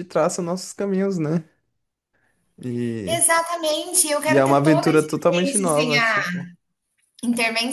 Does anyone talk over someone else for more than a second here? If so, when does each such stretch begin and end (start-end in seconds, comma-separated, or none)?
4.3-6.2